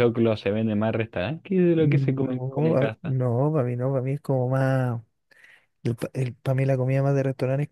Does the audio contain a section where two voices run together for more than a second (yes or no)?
yes